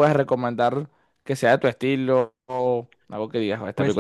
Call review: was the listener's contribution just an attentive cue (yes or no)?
no